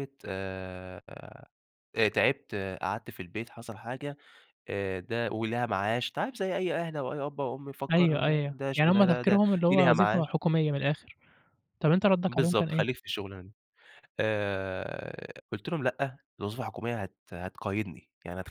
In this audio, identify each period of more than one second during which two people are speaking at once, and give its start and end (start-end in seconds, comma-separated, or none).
7.9-10.3